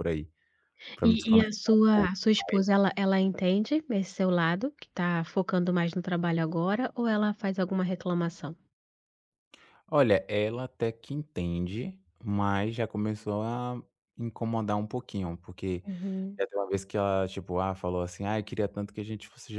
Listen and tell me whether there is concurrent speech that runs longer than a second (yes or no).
yes